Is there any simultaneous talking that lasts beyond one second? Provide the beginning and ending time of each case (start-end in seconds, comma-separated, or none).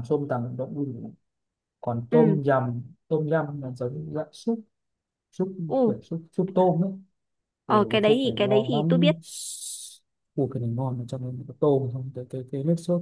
7.7-9.1